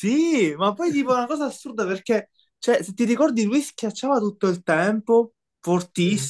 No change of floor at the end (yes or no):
yes